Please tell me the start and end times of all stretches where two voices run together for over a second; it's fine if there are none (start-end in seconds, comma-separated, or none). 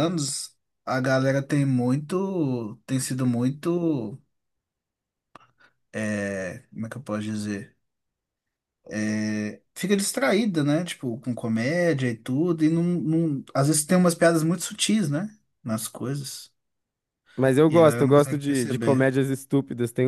17.7-19.2